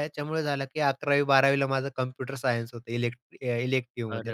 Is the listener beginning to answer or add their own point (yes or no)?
yes